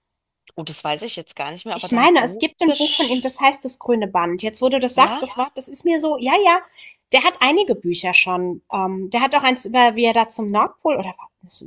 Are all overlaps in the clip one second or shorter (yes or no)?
no